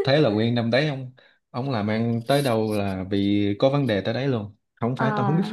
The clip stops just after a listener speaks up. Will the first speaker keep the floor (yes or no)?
yes